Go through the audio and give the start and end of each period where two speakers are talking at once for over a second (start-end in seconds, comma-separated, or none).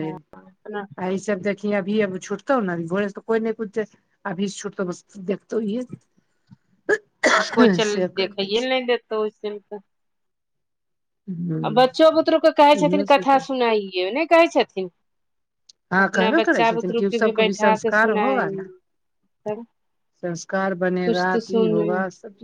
16.0-18.5